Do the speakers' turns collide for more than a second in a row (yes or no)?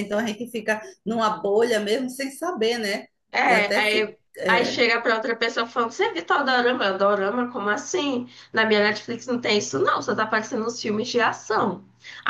yes